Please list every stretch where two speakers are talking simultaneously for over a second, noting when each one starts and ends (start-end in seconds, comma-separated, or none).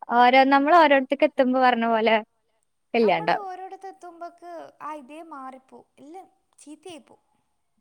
none